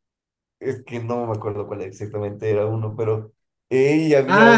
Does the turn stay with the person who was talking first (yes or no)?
no